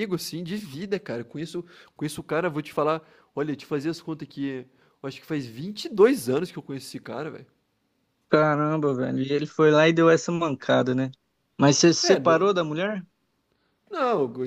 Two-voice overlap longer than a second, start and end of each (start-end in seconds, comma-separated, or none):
none